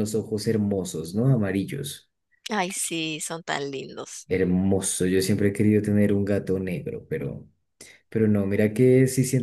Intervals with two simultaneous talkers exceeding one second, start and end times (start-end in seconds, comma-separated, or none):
none